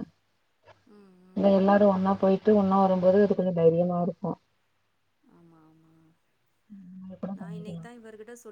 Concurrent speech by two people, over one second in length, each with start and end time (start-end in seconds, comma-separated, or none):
none